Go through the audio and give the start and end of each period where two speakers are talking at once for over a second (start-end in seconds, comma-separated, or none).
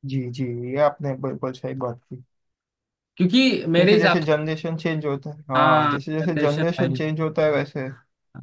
5.5-7.1